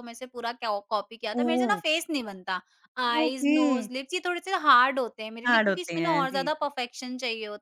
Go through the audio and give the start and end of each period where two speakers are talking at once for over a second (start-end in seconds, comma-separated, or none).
5.5-6.7